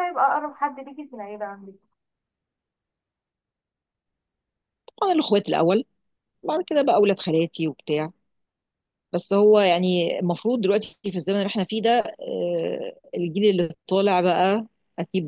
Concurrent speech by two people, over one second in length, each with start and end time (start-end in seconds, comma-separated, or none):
none